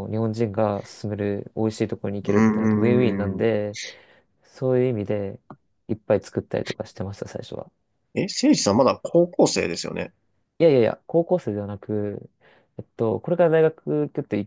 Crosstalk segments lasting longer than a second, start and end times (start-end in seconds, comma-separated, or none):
2.2-3.5